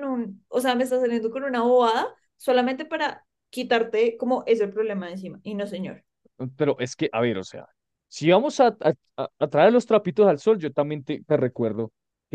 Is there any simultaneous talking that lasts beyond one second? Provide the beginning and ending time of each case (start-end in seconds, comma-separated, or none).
none